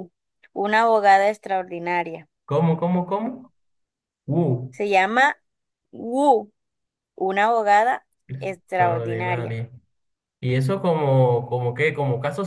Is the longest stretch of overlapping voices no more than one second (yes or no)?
no